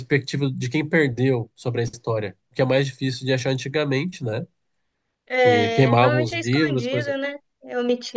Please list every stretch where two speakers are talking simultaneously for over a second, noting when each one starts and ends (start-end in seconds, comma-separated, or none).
5.4-7.2